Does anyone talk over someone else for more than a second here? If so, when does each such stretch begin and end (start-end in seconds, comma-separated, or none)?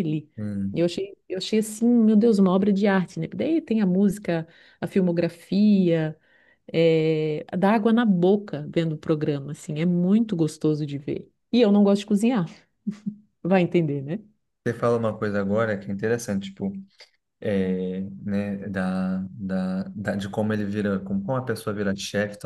none